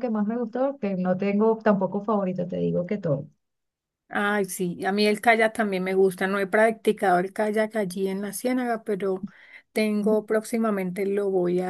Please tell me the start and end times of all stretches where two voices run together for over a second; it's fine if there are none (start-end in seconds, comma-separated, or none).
none